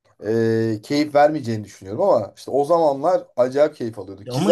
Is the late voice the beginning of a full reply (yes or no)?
yes